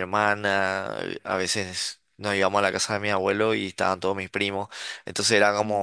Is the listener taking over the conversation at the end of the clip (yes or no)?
no